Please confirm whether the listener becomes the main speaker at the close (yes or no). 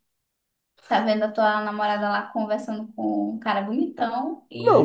yes